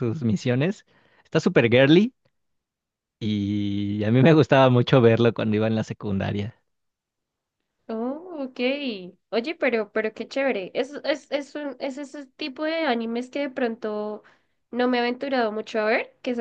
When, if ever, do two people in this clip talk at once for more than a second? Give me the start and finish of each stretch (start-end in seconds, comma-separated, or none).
none